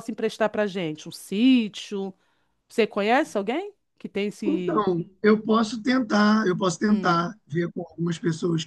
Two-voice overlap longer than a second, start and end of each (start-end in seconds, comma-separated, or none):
none